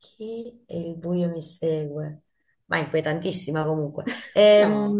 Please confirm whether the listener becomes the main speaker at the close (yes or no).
no